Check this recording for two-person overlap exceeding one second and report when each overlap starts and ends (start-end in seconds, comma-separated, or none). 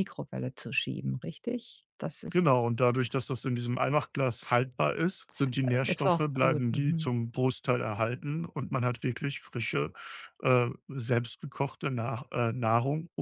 5.8-7.1